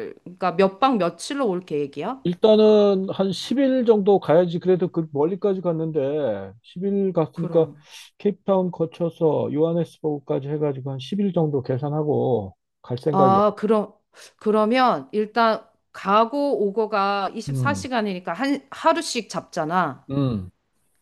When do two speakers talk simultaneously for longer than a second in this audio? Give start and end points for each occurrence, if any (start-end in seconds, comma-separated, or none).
none